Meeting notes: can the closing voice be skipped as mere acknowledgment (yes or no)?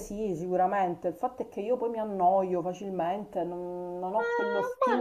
no